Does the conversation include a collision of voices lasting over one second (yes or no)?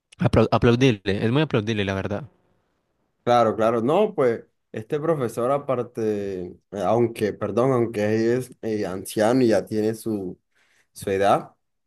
no